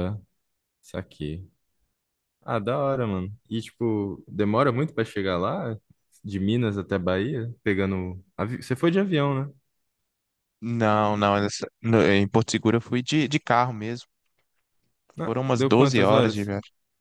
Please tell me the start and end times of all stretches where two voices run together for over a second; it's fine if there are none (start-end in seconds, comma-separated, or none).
15.2-16.5